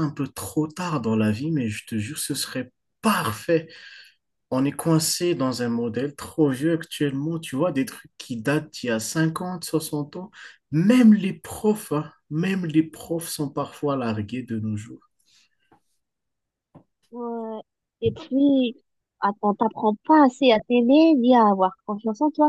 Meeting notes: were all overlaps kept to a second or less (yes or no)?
yes